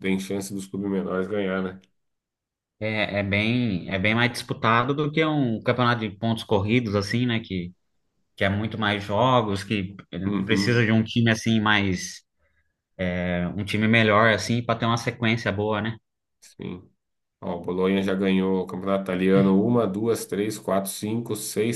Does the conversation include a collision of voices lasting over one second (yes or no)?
no